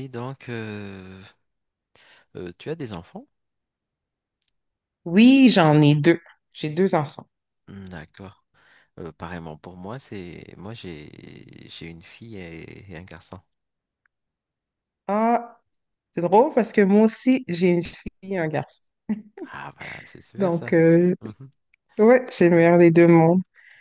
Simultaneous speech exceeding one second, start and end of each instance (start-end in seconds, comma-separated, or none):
none